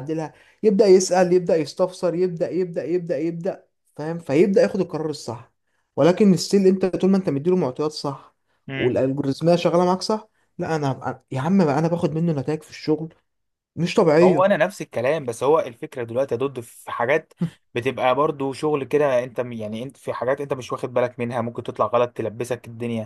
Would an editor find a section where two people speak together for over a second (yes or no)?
no